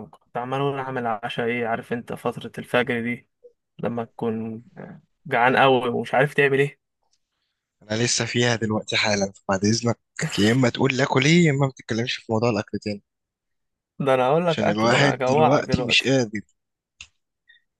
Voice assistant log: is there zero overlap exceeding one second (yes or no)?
no